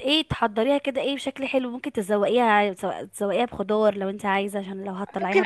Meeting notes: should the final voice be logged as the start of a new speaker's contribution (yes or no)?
yes